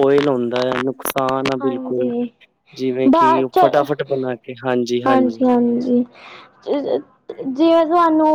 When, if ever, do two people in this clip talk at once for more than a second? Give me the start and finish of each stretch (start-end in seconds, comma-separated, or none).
none